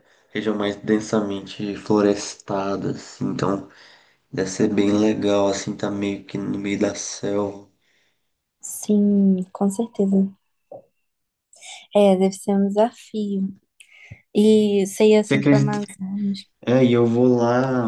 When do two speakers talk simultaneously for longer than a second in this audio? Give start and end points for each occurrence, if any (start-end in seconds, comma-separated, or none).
none